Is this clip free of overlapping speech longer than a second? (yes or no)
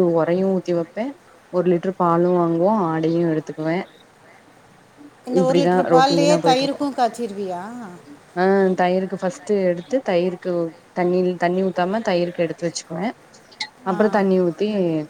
no